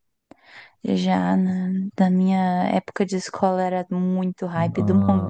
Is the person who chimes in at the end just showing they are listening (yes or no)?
no